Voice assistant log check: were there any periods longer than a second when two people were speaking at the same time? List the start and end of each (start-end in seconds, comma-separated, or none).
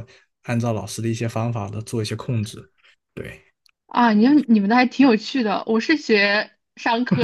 none